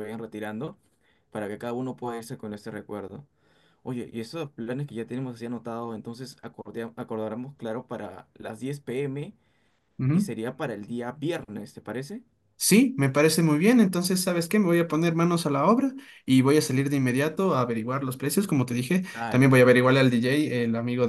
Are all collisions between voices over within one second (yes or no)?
yes